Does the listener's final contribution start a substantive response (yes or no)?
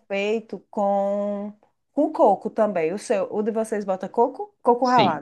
yes